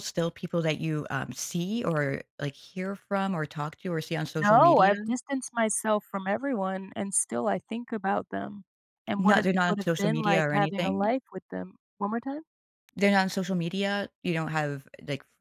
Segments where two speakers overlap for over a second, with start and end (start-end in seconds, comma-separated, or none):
9.2-11.2